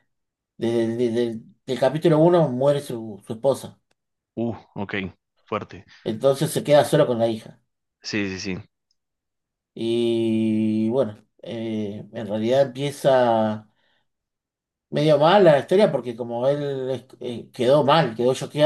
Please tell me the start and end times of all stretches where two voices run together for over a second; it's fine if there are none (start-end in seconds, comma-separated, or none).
none